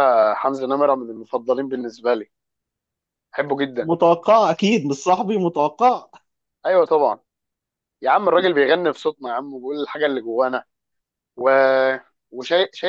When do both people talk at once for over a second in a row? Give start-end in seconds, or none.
none